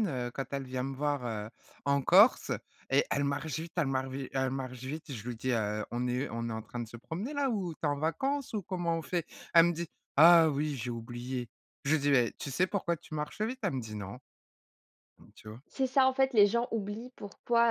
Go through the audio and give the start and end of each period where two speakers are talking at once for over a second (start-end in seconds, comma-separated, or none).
none